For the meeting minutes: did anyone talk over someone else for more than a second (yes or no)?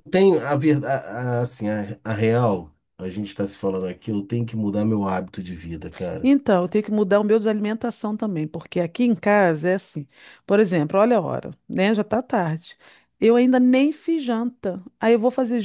no